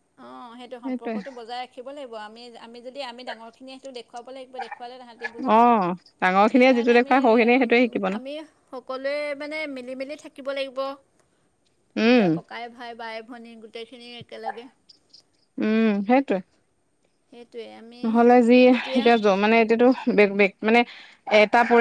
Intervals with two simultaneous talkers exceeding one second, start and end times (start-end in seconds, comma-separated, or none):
6.5-8.2